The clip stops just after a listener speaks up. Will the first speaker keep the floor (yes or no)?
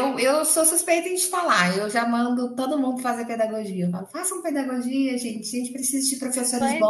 no